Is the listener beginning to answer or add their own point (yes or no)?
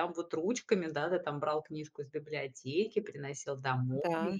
no